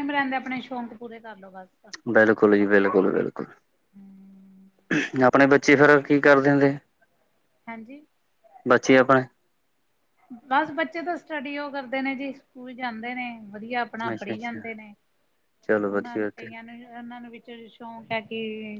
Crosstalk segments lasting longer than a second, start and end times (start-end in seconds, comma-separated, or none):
none